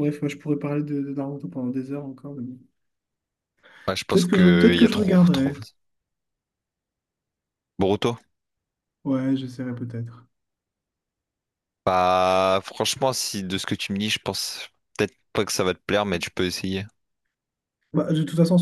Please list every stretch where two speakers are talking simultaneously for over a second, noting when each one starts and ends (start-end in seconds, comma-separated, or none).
4.1-5.5